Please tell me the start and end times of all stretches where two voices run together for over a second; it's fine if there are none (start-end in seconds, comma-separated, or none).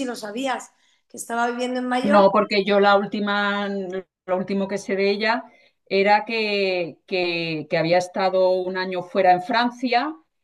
none